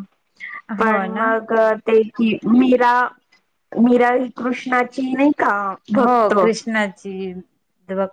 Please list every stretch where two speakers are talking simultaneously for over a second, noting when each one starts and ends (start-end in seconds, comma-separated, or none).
none